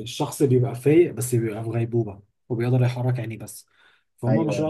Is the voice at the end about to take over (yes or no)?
no